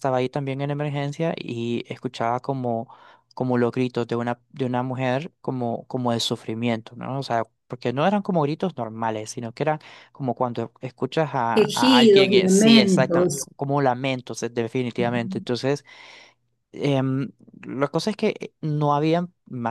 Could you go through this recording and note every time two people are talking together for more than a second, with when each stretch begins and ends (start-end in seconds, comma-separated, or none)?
11.5-13.5